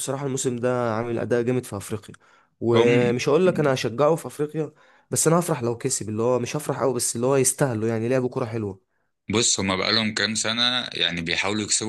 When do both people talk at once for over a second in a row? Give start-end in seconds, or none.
none